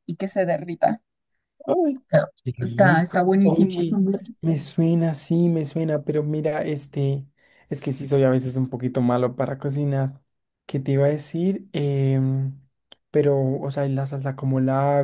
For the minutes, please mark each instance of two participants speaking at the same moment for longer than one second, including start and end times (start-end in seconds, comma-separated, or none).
2.4-4.0